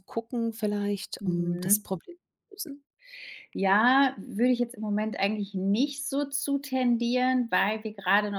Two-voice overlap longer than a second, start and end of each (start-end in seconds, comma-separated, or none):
none